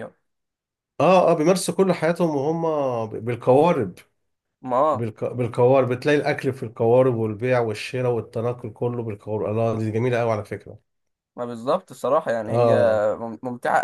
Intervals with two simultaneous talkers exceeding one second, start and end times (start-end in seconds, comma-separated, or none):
none